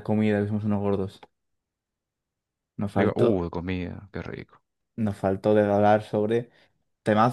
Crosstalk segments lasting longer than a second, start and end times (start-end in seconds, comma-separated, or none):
none